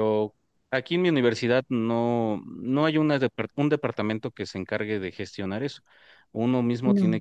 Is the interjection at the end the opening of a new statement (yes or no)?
no